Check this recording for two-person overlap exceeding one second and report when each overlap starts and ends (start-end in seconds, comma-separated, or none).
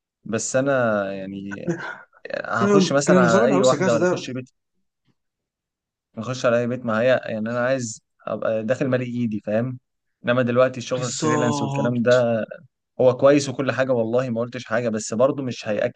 2.6-4.3, 10.9-12.2